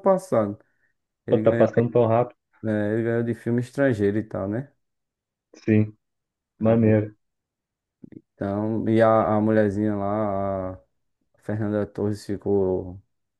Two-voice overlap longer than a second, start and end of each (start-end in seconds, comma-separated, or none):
none